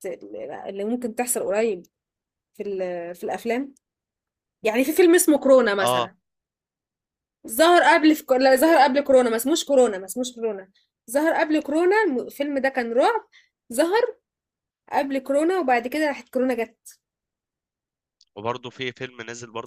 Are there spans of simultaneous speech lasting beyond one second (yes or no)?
no